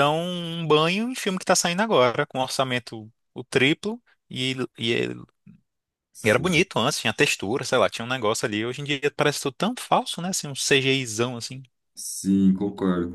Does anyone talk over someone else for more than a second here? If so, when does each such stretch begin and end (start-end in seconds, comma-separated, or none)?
none